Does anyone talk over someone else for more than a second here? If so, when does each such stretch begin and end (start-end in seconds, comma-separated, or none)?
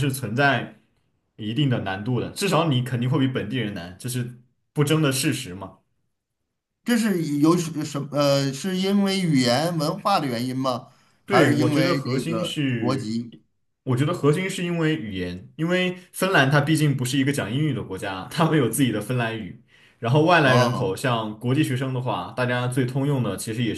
11.3-13.1